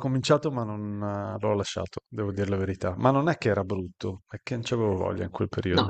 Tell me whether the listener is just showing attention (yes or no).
no